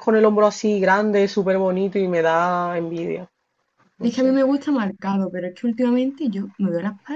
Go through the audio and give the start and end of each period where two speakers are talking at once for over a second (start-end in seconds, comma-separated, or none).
none